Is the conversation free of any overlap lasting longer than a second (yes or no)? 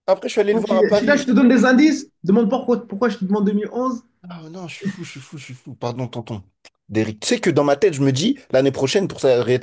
no